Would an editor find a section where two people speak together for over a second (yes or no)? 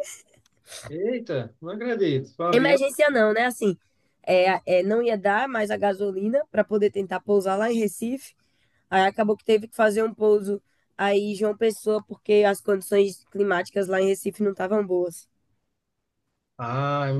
no